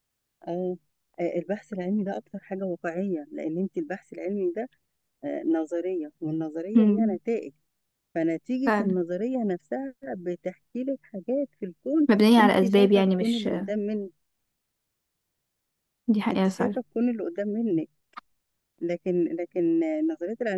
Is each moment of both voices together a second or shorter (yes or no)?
no